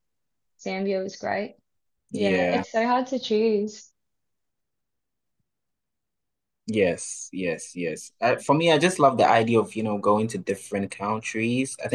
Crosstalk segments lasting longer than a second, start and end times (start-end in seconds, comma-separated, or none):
none